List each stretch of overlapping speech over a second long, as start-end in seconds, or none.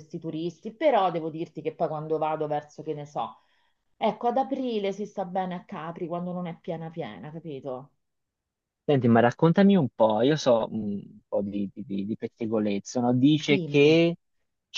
none